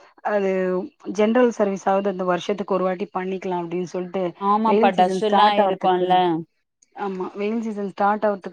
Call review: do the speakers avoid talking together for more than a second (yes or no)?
no